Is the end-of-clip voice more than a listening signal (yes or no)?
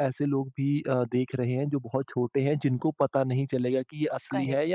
no